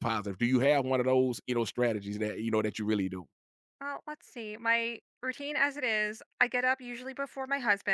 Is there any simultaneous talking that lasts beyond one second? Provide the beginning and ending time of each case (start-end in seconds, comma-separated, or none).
none